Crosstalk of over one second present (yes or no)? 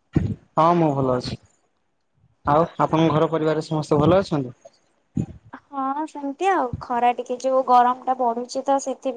no